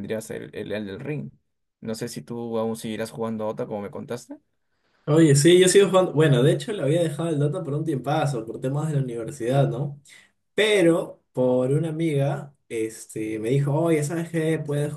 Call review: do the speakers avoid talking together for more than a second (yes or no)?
yes